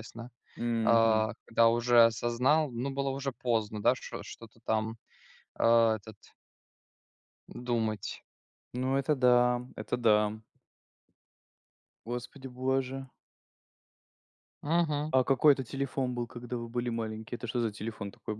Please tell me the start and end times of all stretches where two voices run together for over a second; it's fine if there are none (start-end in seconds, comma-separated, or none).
none